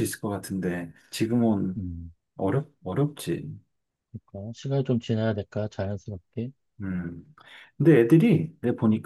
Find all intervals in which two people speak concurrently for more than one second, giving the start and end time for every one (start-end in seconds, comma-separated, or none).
none